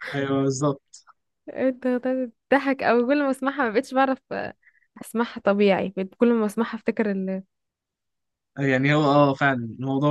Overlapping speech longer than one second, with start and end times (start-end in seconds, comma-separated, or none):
none